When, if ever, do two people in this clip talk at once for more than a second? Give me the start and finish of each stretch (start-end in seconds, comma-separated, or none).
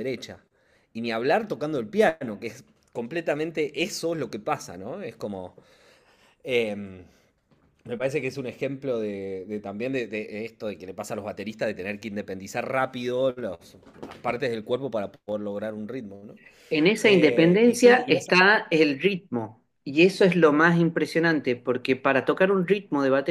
17.0-18.4